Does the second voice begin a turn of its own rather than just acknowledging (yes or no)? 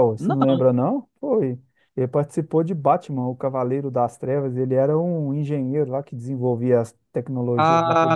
yes